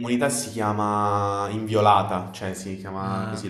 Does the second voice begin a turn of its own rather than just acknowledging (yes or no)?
yes